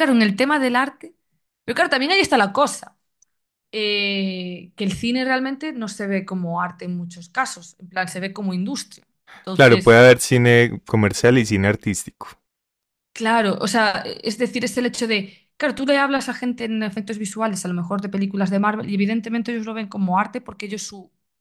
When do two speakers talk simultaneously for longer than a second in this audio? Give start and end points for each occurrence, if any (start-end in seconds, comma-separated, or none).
none